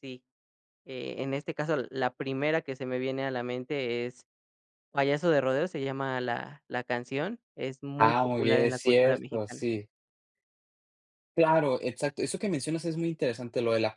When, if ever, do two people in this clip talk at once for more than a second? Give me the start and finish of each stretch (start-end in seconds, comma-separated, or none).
8.0-9.7